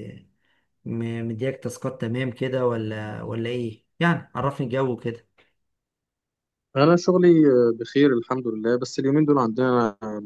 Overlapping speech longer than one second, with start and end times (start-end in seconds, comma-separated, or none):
none